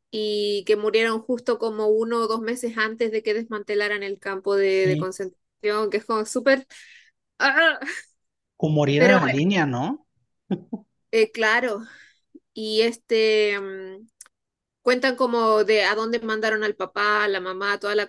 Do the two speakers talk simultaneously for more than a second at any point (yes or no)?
no